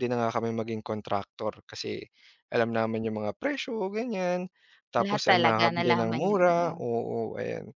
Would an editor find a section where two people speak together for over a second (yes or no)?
yes